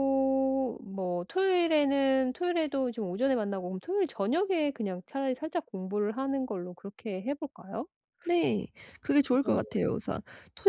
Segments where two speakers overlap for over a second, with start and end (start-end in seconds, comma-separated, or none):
none